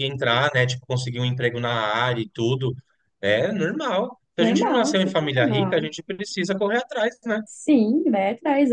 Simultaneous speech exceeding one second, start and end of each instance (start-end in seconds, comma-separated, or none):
4.4-5.9